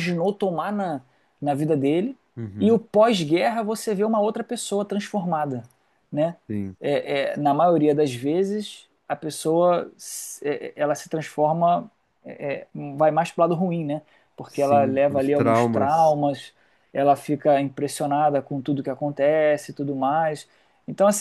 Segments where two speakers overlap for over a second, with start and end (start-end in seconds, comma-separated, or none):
14.5-16.1